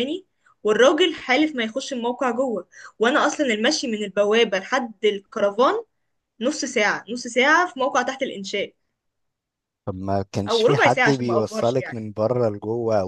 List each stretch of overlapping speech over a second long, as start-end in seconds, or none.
10.5-12.0